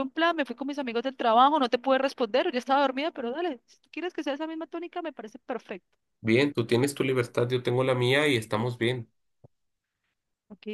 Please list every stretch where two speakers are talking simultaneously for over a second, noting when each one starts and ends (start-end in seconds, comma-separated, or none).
none